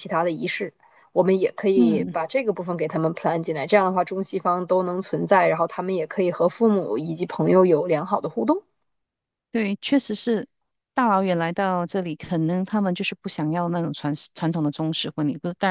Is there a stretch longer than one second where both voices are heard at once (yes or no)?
no